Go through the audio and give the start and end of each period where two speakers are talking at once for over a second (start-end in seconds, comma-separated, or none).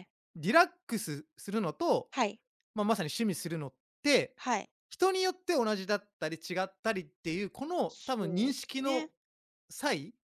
7.9-9.1